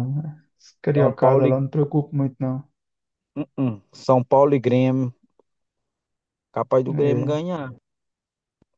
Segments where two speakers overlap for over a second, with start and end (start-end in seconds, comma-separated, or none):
none